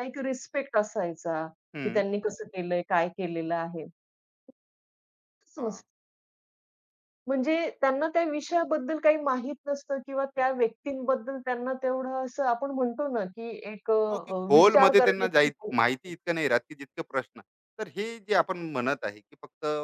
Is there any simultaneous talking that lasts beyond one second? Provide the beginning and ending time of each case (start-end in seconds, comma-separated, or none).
14.1-16.1